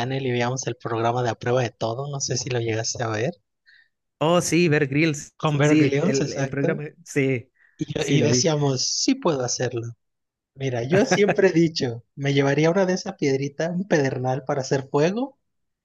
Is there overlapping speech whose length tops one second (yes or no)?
yes